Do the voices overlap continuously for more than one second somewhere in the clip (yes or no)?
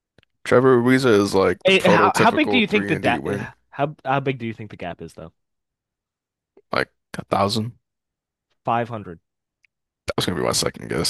yes